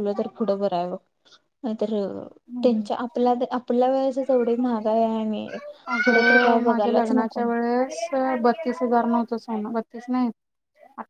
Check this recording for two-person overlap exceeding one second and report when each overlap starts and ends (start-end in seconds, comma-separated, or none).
6.0-7.4